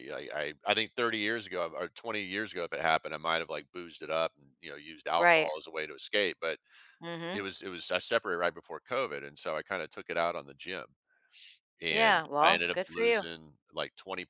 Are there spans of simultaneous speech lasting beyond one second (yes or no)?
yes